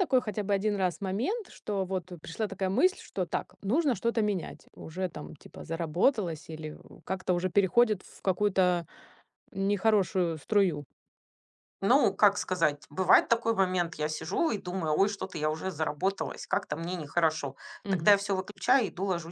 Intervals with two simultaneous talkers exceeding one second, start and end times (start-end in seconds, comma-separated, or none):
none